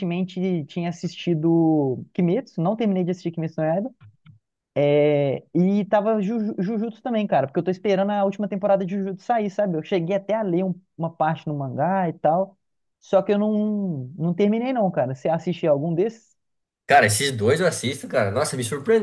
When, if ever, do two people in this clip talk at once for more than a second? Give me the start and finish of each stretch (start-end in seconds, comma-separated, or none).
none